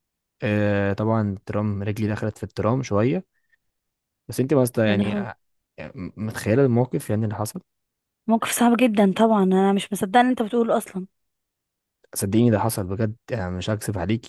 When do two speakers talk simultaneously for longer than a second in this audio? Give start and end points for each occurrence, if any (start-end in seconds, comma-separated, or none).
none